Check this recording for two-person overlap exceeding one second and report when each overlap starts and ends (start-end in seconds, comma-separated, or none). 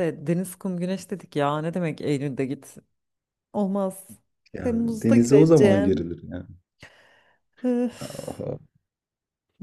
4.6-6.1